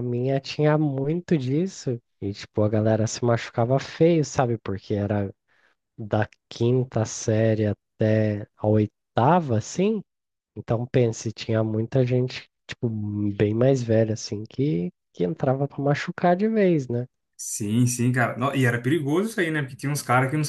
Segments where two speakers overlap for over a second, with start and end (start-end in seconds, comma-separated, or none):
none